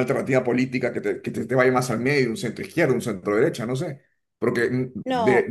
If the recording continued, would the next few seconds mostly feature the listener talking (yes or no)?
no